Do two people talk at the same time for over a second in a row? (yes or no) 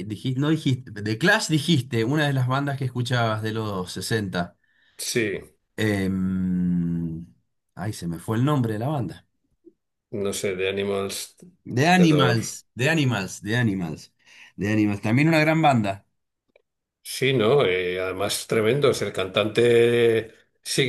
no